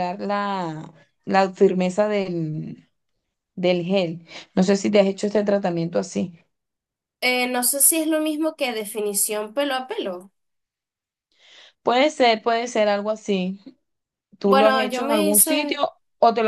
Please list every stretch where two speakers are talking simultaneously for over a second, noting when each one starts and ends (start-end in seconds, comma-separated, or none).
14.5-15.8